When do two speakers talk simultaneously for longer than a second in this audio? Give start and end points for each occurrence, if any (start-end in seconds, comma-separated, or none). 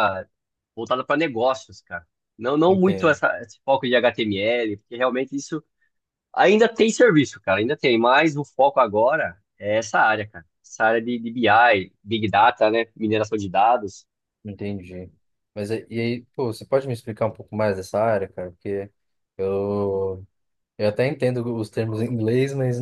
none